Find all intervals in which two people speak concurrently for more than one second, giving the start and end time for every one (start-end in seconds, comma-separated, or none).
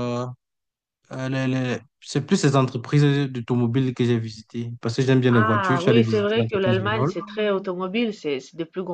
5.3-7.1